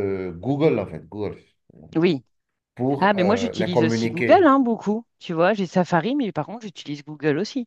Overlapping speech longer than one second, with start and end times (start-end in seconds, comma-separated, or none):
3.0-4.5